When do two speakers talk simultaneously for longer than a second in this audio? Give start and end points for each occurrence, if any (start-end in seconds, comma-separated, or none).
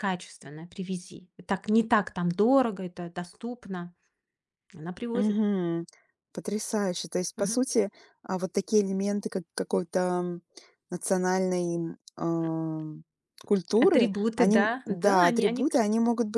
13.8-15.8